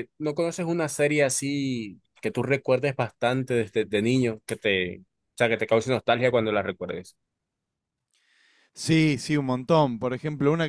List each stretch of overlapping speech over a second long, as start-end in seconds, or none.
none